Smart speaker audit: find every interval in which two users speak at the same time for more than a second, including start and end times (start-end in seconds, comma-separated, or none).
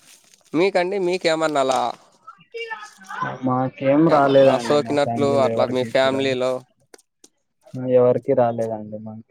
4.2-6.3